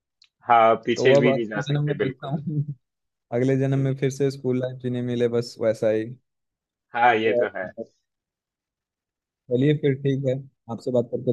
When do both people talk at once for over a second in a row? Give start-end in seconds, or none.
0.9-2.4